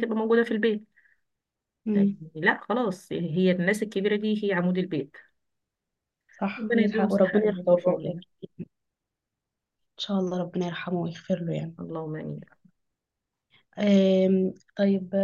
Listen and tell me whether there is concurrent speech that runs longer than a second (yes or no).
yes